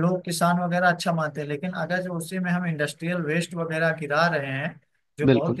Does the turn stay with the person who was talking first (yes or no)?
yes